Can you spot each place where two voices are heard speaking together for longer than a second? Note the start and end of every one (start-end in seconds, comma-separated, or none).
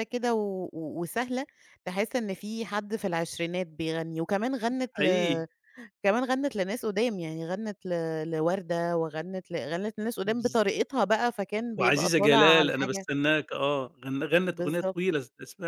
11.8-13.1